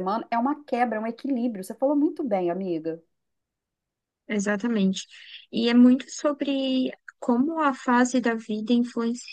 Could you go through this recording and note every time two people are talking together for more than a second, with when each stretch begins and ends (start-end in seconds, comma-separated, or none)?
none